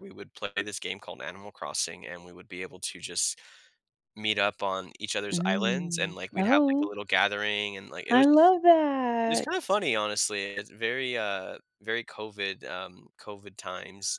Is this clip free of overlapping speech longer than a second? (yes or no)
no